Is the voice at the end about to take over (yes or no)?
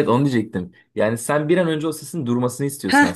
no